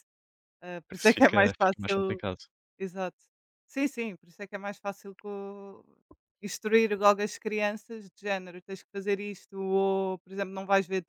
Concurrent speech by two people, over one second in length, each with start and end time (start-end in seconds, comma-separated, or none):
0.9-2.2